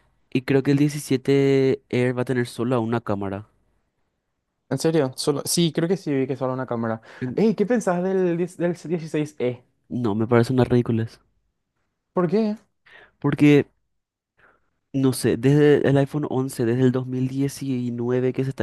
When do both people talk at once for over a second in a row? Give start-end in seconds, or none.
none